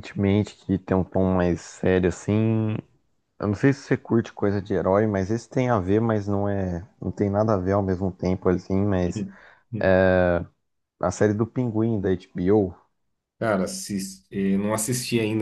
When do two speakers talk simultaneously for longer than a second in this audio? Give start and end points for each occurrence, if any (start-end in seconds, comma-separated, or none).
none